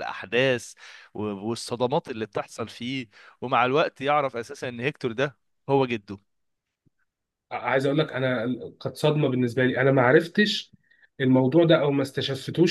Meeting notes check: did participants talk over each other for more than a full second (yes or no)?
no